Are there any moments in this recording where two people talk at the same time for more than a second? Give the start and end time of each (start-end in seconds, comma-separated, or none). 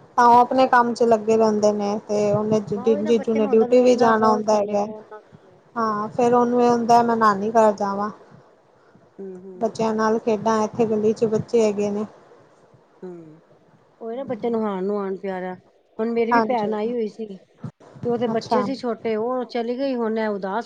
2.8-4.8